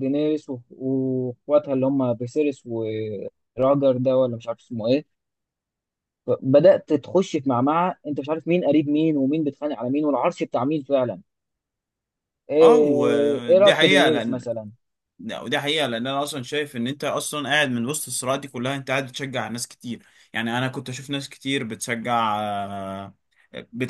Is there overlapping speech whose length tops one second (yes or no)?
yes